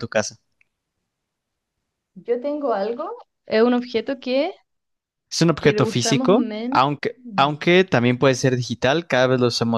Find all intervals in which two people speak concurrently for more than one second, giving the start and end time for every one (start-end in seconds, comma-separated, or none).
5.6-7.5